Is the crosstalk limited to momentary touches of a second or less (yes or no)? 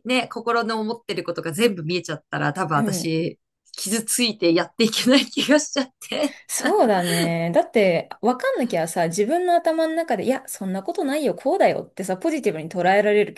yes